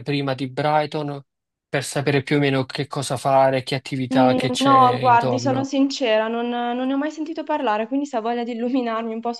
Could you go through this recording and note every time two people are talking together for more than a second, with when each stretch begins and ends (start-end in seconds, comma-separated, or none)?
4.1-5.7